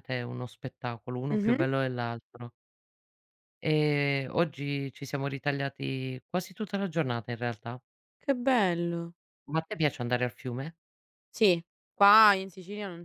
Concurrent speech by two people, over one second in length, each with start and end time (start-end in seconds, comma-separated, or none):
none